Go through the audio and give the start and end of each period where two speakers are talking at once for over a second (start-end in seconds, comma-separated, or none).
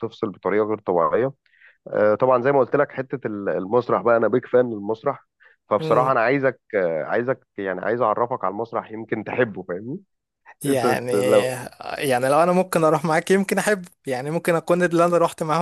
none